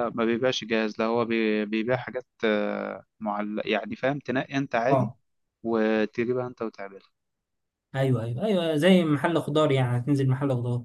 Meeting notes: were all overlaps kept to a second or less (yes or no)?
yes